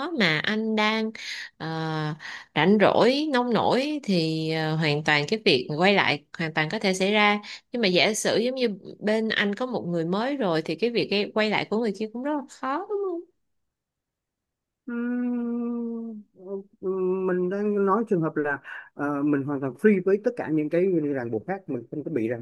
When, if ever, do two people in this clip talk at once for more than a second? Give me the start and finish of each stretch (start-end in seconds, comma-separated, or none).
none